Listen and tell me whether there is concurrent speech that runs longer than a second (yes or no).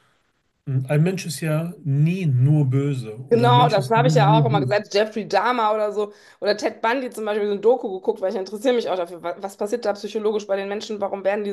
yes